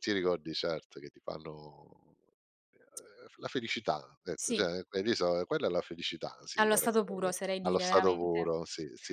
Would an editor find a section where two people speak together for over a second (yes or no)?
yes